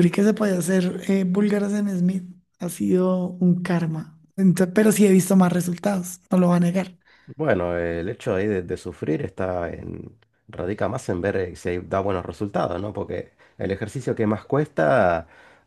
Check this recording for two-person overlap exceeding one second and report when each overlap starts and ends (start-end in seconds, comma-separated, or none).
none